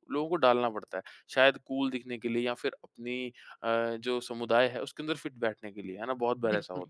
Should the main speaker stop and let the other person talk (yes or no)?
no